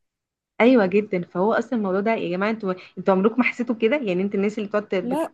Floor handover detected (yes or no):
no